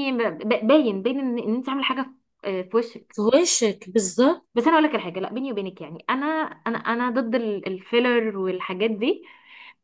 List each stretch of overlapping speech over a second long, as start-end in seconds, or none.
none